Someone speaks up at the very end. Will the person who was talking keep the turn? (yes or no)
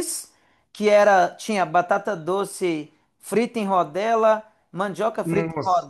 yes